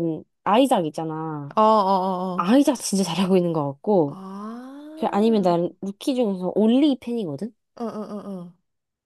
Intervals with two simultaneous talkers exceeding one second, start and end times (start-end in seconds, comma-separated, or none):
none